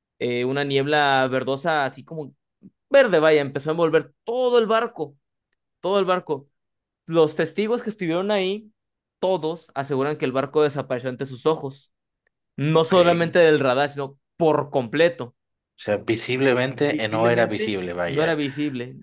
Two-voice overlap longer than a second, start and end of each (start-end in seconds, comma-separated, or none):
16.9-18.4